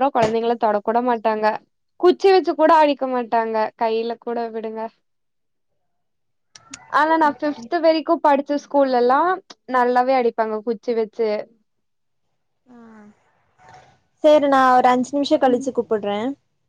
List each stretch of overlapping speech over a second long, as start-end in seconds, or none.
none